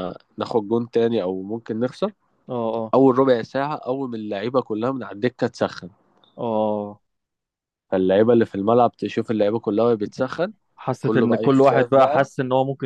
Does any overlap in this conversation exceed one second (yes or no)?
yes